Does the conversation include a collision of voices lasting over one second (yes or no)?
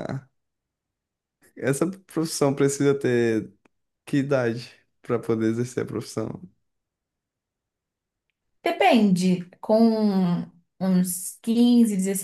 no